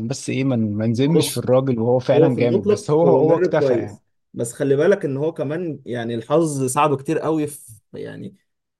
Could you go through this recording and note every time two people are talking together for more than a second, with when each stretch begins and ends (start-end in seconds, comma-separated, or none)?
2.1-4.0